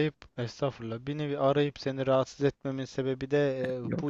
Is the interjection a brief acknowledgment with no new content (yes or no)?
yes